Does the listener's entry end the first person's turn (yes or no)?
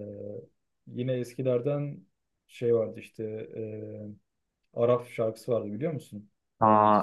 yes